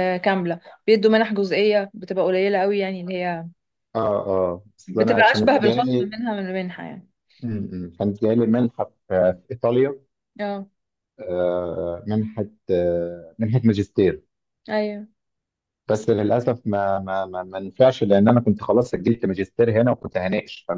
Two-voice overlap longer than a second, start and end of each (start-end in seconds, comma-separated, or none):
4.9-6.2